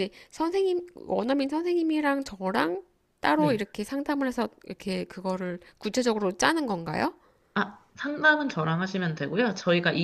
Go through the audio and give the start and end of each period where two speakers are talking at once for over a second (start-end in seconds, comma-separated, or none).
none